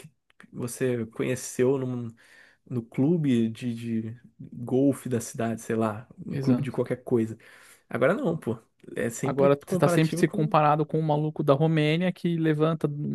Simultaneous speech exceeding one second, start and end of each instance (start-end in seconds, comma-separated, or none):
9.2-10.6